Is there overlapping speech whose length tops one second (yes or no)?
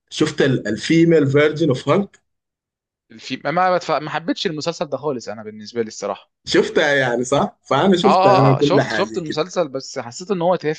yes